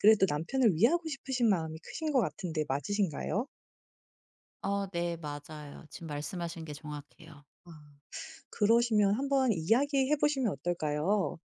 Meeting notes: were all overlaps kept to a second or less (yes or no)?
yes